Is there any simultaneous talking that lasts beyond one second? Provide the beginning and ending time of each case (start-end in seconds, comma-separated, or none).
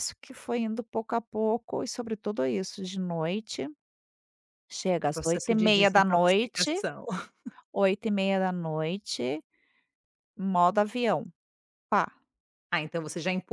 5.0-6.8